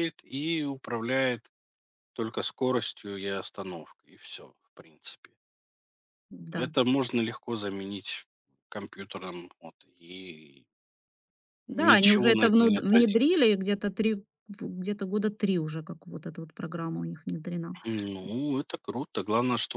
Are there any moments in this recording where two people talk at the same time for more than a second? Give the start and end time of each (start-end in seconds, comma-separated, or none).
11.7-13.3